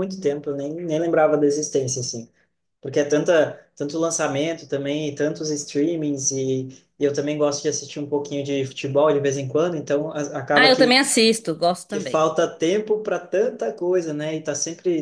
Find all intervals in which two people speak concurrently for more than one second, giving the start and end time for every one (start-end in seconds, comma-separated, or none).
none